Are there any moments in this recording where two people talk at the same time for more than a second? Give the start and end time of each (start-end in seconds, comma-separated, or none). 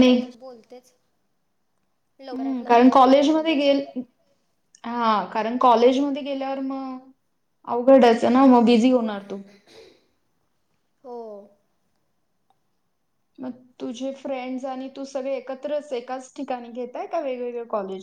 2.3-3.6